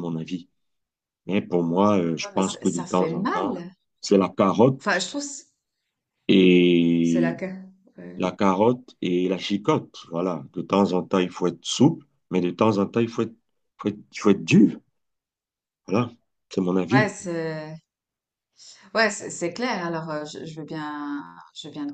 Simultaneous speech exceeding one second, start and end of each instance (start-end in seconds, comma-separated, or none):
2.2-3.5